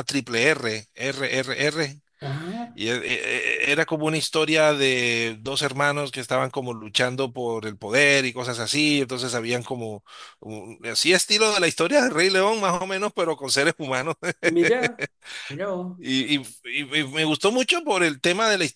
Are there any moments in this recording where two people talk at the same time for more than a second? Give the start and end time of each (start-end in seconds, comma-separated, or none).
none